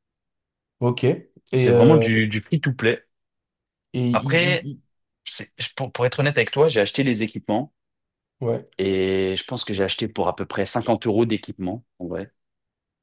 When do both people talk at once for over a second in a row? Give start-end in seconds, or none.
none